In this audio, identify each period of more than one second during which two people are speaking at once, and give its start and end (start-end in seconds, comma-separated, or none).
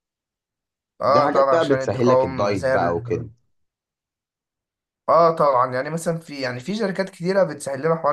1.1-3.3